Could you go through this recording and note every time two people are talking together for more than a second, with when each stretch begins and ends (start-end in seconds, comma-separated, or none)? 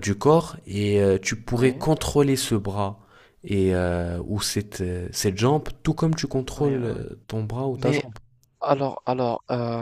none